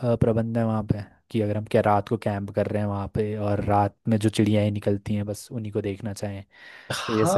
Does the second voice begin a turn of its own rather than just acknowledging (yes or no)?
yes